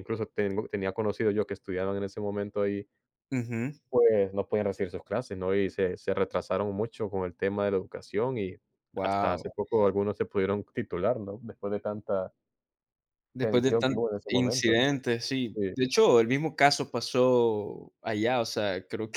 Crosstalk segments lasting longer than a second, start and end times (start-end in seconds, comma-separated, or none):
13.4-14.8